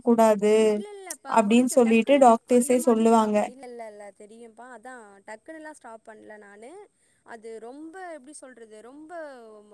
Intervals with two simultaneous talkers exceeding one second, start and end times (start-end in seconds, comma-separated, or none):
1.4-3.4